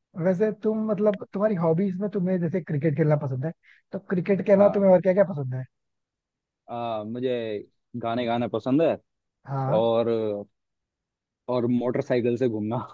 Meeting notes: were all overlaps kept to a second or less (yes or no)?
yes